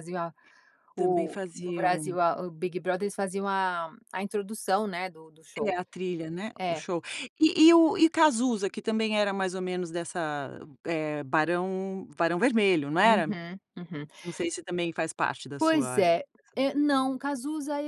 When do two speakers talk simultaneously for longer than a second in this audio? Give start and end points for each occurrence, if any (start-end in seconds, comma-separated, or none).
0.9-2.2